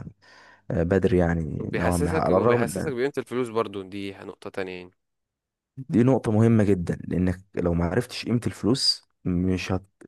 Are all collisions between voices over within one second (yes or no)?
no